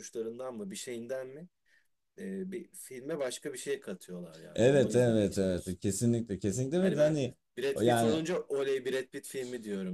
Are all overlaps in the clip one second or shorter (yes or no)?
no